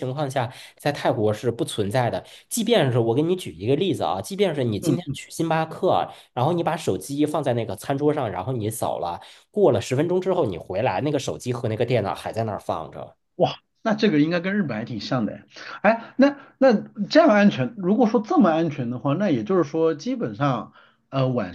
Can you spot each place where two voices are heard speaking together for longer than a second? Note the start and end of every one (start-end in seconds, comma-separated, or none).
none